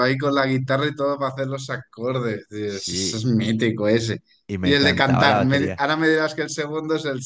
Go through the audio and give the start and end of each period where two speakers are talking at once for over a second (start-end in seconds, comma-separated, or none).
4.6-5.8